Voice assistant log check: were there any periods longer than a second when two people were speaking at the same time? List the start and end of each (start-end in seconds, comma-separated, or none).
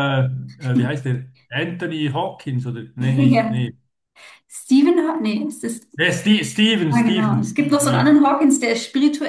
6.9-8.2